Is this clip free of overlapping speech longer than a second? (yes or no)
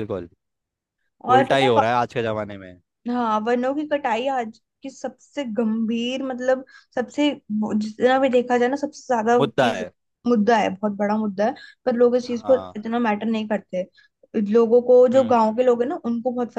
yes